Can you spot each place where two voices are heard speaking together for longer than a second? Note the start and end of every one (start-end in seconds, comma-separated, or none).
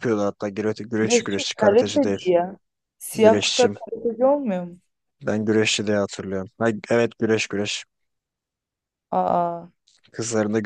1.0-2.3